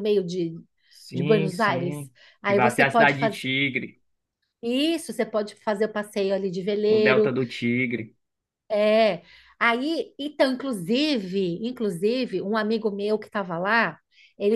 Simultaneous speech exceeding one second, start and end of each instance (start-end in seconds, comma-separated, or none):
1.1-3.4